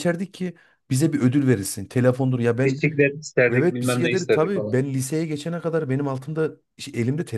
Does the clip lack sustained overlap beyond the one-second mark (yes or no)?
no